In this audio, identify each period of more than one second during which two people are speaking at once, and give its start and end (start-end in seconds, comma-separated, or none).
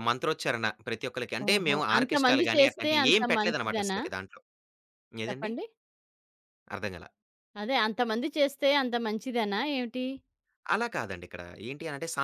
1.5-4.0